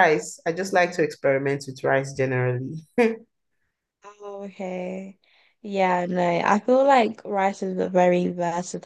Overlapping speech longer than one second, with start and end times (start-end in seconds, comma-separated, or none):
none